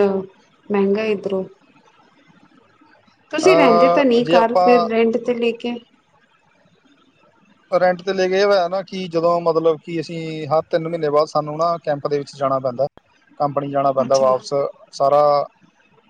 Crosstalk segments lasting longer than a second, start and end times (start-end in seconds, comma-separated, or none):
3.4-4.9